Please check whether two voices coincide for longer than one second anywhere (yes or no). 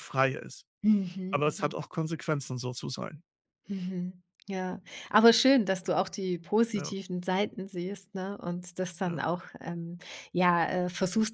no